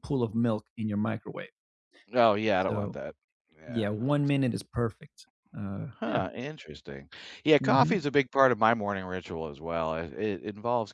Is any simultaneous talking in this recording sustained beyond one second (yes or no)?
no